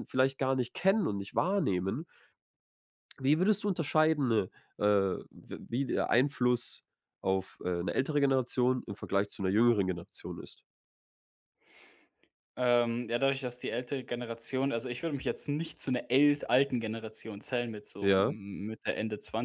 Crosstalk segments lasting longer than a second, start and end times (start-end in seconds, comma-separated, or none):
none